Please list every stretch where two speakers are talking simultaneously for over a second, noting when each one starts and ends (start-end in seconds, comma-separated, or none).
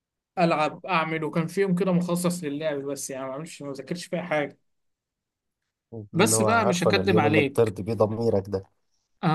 6.1-7.7